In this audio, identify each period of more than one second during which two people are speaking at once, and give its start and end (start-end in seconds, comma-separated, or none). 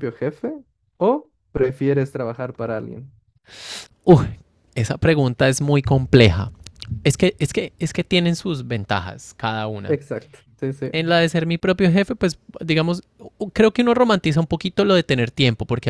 none